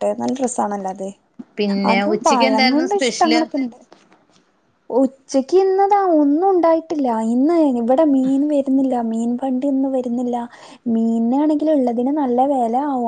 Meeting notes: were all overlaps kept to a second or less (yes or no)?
no